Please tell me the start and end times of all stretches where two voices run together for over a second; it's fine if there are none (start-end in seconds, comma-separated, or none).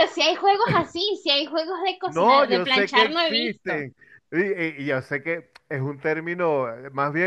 2.0-3.9